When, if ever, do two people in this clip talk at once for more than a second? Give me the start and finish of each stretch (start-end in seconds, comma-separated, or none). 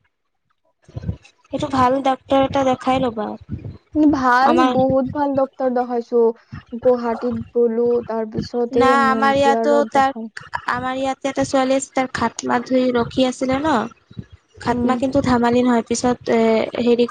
8.4-10.3